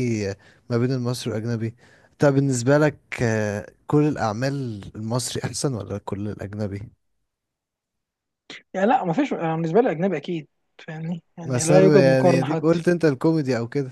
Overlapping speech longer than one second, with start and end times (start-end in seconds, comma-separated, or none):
11.4-12.8